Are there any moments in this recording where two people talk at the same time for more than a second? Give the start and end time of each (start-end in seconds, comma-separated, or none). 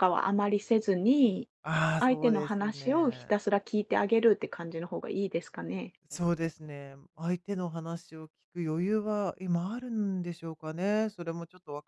2.0-3.3